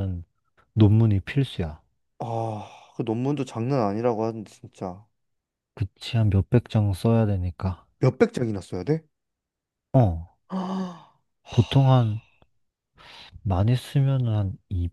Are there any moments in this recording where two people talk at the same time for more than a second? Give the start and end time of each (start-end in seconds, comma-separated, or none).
none